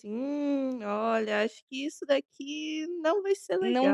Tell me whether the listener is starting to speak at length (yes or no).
yes